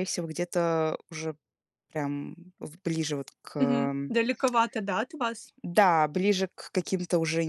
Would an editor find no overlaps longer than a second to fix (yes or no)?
yes